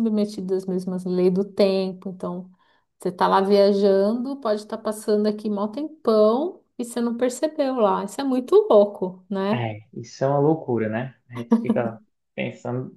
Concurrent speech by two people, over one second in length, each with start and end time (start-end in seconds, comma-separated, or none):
none